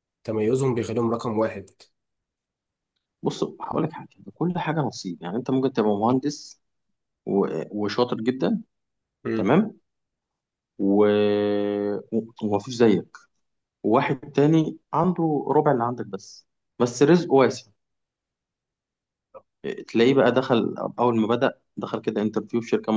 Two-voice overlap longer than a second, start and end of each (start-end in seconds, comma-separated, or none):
none